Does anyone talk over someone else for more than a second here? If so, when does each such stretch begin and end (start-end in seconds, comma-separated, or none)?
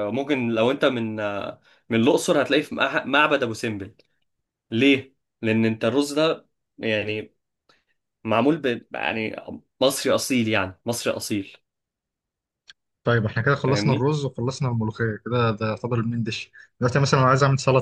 none